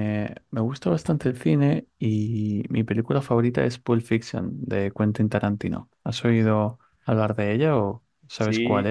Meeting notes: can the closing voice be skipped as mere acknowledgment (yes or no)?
no